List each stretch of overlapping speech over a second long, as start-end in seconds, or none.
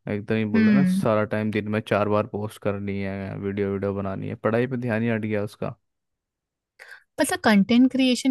none